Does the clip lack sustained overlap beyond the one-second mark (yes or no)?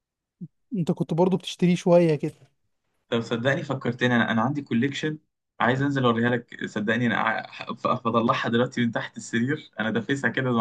yes